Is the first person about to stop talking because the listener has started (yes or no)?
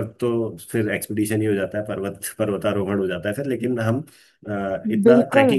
no